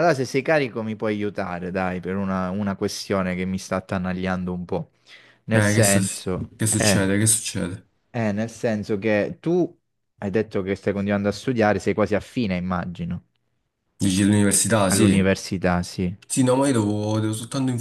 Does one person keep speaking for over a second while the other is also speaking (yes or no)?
yes